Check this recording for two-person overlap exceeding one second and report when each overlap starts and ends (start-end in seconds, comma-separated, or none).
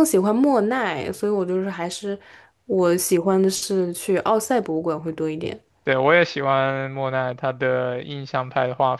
none